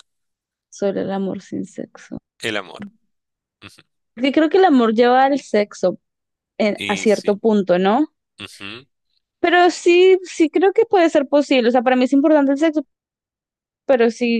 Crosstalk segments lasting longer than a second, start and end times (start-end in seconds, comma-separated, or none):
none